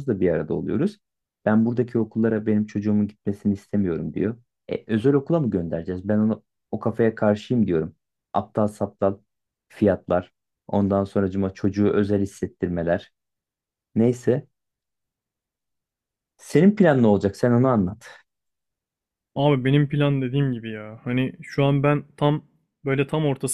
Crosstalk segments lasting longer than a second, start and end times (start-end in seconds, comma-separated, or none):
none